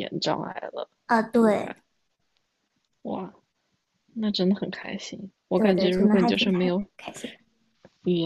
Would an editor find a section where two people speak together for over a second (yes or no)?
yes